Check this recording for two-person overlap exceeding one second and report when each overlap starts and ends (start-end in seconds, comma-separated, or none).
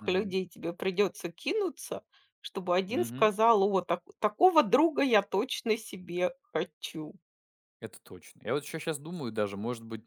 none